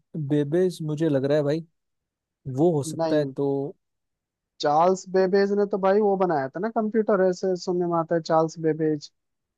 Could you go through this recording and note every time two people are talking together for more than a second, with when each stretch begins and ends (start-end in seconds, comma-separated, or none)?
none